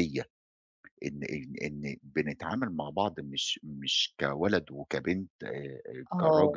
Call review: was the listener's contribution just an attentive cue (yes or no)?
yes